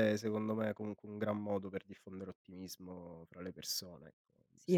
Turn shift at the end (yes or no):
yes